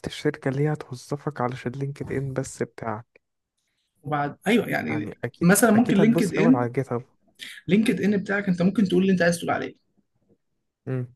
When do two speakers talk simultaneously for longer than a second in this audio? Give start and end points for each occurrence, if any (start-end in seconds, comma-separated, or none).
4.8-6.7